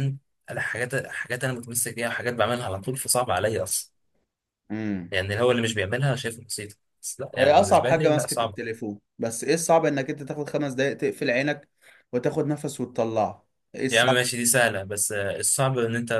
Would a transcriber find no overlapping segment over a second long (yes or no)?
no